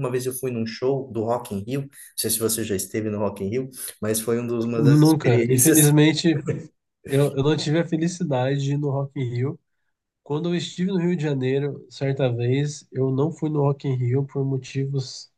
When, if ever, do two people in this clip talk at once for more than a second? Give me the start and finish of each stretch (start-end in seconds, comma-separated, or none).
4.7-5.9